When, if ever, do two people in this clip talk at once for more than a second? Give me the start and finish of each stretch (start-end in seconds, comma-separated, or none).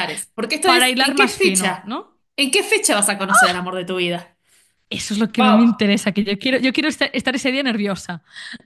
0.6-1.9